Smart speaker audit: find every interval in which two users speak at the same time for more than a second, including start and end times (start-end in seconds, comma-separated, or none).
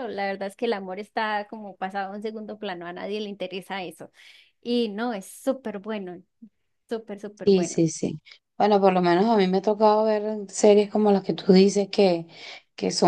none